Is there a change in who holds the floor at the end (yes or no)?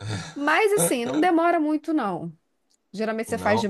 no